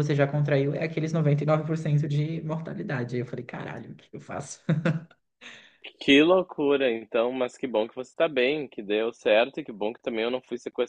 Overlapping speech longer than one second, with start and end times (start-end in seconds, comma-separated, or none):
none